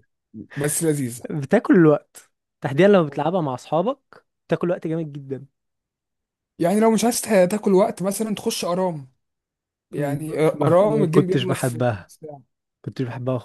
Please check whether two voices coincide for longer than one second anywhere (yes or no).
yes